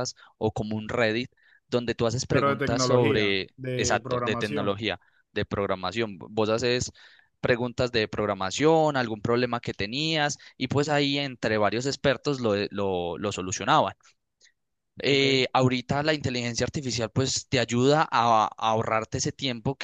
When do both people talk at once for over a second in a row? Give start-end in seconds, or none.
2.3-4.8